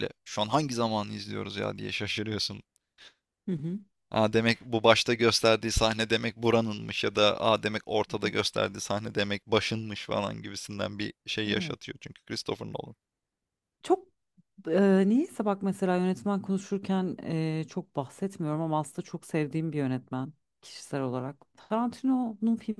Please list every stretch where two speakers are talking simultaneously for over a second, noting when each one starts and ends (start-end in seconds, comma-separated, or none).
none